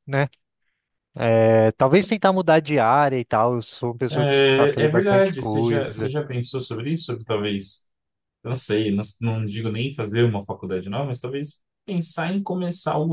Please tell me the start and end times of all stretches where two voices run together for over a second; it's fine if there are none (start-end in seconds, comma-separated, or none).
4.1-6.1